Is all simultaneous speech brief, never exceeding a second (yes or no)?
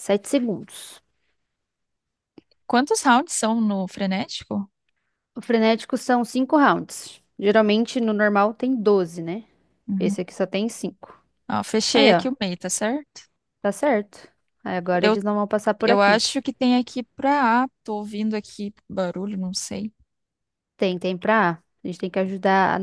yes